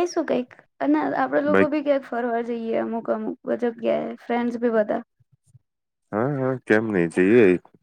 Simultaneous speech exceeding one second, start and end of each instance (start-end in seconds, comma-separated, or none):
none